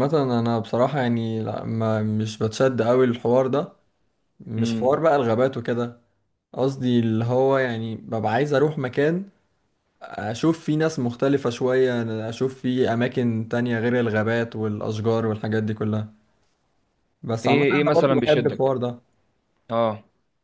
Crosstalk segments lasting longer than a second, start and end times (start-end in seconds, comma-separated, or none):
17.4-18.7